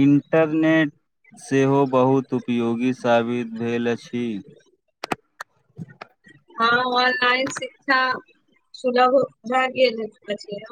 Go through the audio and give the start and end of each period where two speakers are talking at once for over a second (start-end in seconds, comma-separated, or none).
none